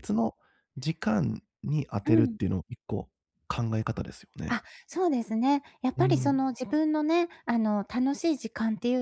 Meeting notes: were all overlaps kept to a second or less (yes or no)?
yes